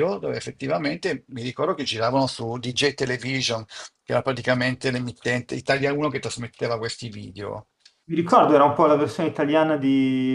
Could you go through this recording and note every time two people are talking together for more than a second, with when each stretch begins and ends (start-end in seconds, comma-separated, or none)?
none